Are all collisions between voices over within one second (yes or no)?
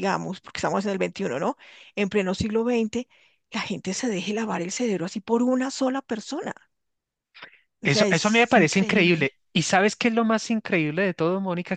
no